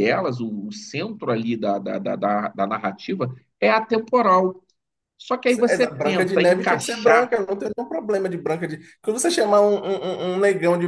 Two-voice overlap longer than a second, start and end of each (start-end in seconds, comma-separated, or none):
5.7-7.3